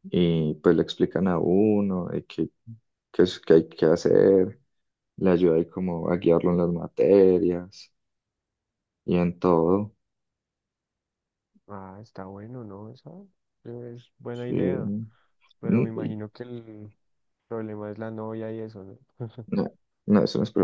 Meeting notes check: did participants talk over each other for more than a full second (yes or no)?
no